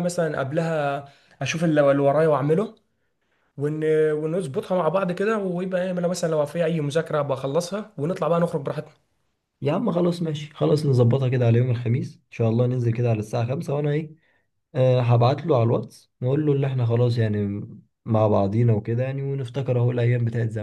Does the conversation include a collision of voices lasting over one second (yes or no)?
no